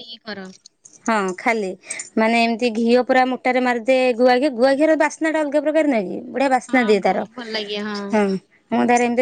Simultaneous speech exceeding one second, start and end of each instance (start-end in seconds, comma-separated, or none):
none